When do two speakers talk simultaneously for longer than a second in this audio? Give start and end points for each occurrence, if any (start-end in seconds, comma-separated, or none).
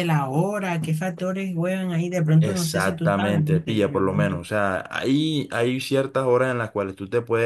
2.4-4.4